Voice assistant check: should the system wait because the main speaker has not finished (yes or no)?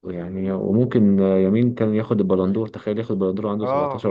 no